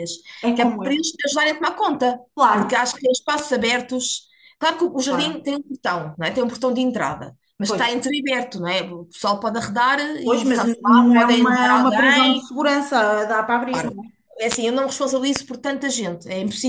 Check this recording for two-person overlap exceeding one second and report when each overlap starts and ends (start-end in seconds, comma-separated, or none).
10.2-12.5